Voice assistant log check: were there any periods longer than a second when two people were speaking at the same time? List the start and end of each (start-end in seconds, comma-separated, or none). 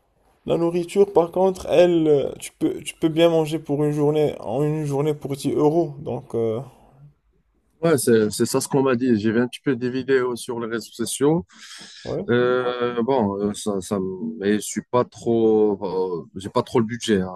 none